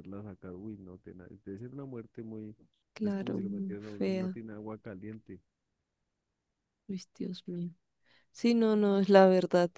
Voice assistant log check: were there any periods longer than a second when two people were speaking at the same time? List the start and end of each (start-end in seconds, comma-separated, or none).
3.0-4.3